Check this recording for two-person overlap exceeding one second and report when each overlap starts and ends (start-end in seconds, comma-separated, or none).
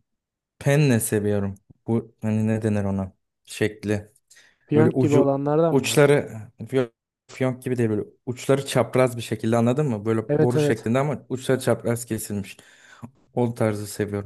4.7-6.2